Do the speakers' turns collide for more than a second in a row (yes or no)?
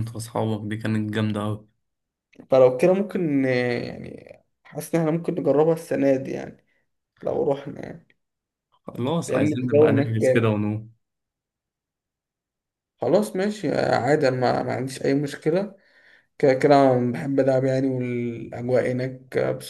yes